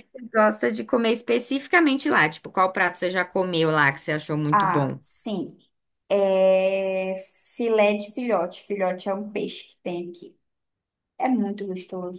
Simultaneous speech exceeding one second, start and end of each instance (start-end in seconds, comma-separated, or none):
none